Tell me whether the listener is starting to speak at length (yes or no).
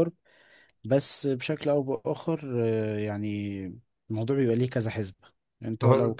no